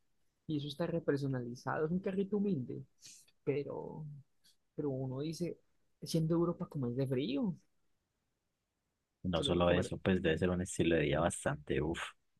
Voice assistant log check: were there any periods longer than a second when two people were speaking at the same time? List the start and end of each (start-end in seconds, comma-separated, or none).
none